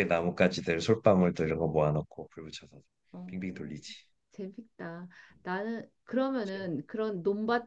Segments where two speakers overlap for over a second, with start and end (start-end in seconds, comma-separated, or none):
none